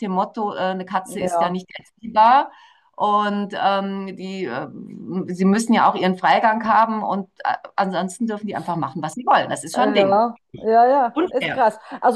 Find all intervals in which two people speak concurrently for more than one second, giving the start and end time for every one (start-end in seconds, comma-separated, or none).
none